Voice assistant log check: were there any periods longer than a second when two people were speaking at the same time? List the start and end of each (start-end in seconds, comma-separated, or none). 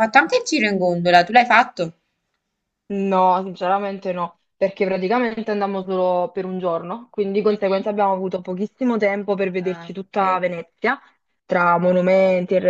none